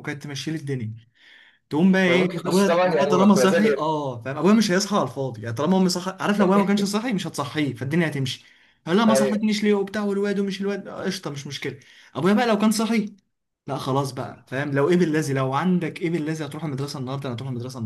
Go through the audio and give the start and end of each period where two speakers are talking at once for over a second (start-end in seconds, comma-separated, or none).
2.1-3.9